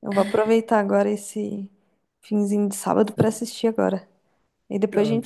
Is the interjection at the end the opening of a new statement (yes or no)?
yes